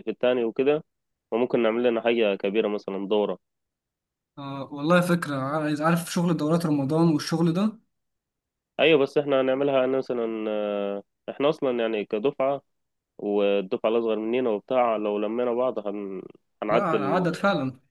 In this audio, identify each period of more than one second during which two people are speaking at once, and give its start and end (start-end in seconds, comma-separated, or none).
none